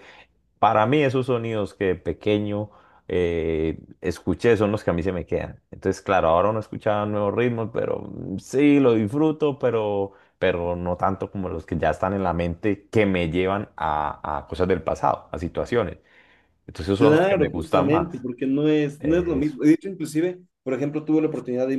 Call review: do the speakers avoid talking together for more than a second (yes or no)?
no